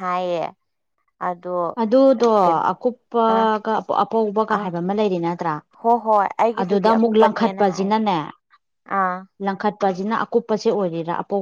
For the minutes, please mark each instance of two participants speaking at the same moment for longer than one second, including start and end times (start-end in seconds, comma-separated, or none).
6.6-7.9